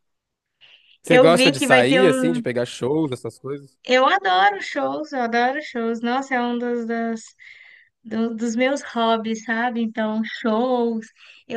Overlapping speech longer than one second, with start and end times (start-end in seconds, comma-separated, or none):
1.1-2.4